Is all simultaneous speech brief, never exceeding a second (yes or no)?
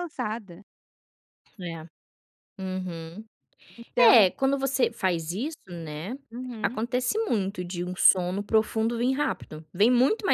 yes